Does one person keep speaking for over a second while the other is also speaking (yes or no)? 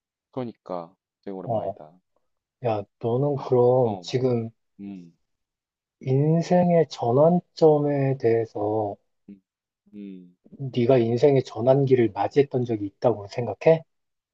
no